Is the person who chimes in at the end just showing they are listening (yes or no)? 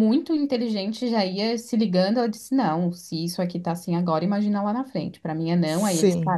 yes